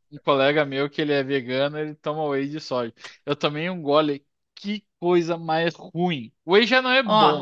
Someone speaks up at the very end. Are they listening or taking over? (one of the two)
taking over